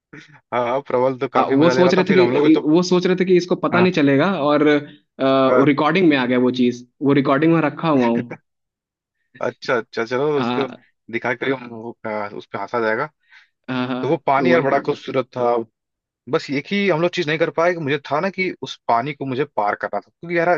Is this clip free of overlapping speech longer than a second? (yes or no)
no